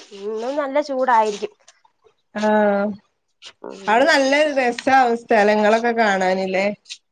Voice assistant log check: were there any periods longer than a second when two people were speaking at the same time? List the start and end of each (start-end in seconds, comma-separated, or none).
none